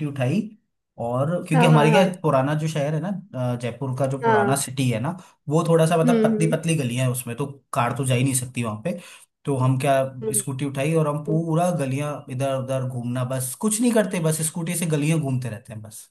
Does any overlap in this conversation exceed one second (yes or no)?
no